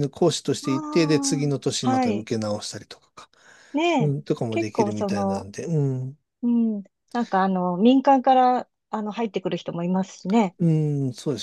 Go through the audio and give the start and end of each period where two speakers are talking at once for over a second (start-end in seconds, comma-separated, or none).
0.6-2.3, 4.0-5.5